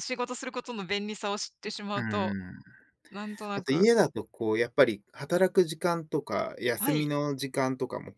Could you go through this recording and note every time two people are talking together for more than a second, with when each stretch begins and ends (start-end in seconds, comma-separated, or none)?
none